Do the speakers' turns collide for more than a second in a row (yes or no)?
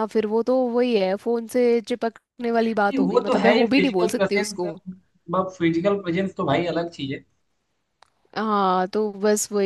yes